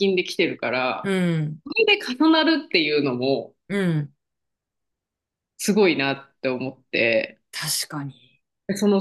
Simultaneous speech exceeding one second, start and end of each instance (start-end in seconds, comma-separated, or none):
none